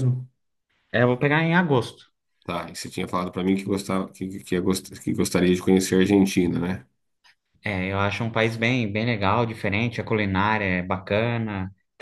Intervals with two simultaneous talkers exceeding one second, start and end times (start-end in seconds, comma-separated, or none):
none